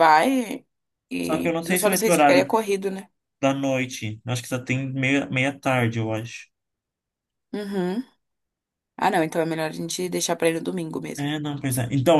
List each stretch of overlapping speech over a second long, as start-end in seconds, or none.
1.2-2.5